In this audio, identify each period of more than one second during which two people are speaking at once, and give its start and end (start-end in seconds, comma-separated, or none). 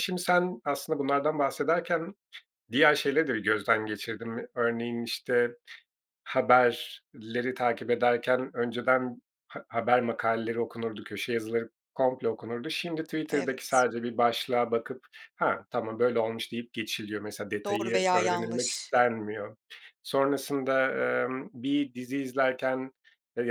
17.6-18.9